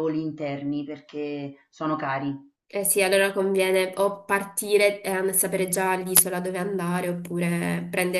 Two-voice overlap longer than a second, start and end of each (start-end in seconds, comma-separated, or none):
none